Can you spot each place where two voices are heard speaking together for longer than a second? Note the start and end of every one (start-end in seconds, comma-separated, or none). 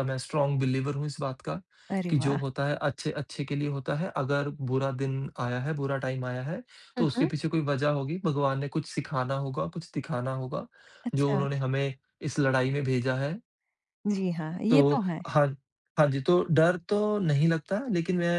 none